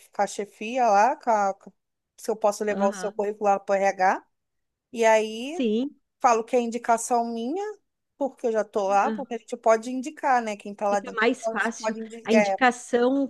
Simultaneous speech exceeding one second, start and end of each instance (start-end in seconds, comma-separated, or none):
10.9-12.6